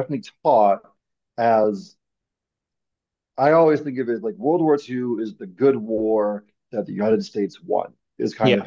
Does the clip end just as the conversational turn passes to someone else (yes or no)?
no